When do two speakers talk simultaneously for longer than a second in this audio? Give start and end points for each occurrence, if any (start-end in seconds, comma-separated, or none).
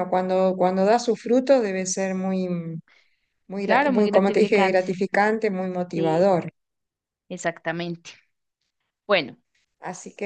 3.6-4.8